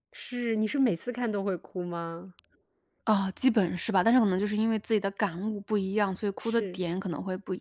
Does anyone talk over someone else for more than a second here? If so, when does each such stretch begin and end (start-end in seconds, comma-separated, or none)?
none